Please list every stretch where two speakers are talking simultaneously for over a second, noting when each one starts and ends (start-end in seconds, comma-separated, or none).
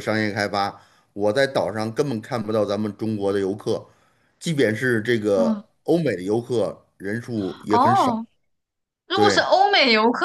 none